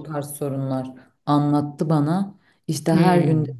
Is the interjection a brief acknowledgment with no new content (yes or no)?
yes